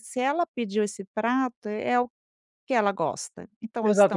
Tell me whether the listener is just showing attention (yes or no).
no